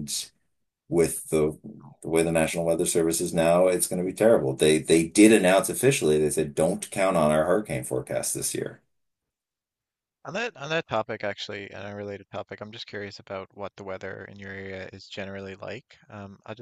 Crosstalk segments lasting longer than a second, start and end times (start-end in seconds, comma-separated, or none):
none